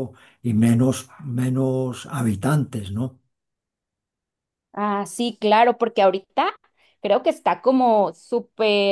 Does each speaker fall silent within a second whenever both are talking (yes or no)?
yes